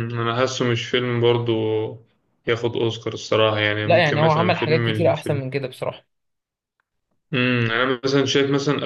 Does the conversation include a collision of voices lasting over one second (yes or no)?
yes